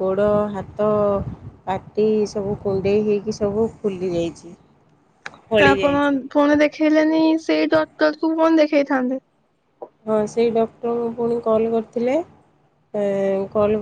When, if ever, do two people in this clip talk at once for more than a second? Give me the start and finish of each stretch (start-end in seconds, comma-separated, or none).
none